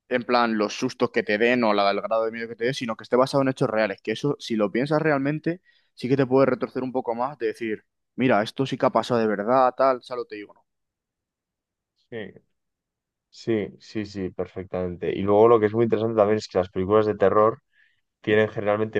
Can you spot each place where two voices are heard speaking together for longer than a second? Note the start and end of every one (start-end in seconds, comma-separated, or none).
none